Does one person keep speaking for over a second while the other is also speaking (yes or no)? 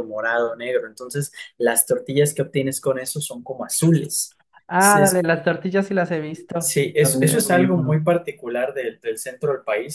yes